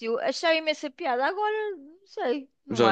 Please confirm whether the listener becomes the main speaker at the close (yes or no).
yes